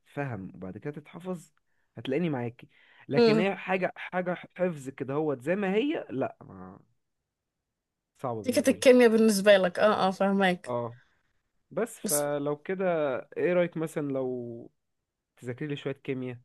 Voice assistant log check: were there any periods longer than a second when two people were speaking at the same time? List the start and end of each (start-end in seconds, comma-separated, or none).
none